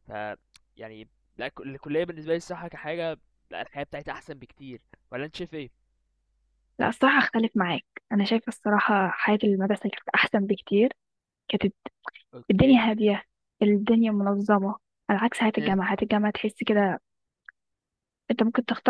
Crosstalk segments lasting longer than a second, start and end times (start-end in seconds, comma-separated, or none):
none